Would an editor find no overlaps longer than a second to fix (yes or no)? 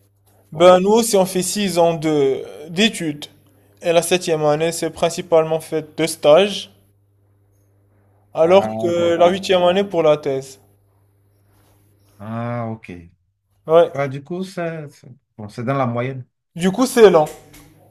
no